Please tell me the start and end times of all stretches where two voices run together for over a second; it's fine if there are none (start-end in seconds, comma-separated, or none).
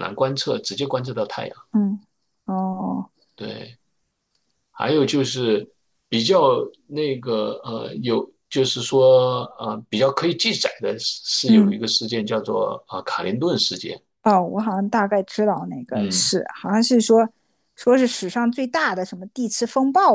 none